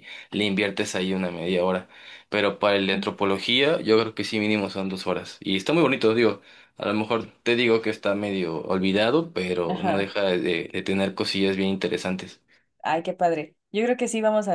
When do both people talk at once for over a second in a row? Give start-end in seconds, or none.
none